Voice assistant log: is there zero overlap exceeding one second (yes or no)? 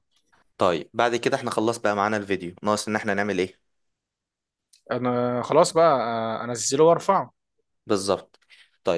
yes